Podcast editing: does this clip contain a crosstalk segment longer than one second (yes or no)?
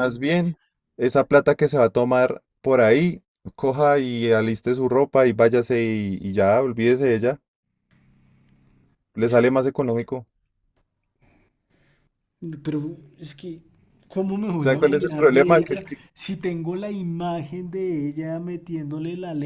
yes